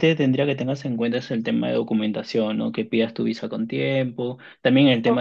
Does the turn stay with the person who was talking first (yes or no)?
yes